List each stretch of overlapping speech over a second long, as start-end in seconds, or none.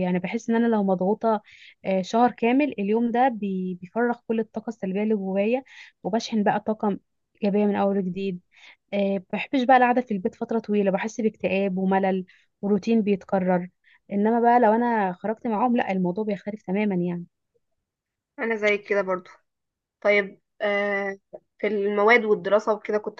none